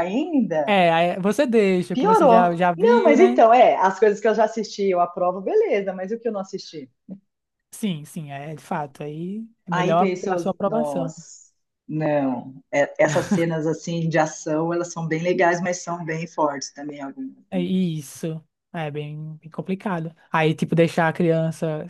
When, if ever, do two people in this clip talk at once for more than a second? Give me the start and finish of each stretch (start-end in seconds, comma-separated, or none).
1.9-3.4, 9.7-11.1